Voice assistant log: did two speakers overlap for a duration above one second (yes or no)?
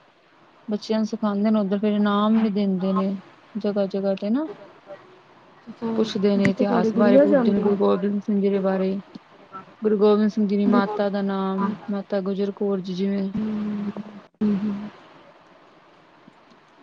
yes